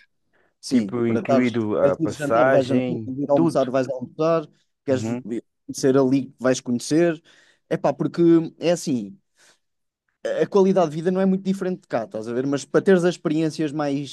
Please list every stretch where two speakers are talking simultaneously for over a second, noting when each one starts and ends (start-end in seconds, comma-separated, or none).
0.7-3.7